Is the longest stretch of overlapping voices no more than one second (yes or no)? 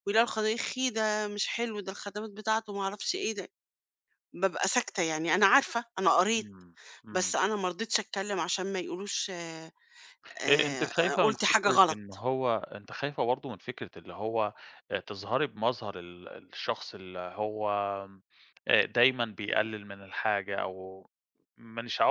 no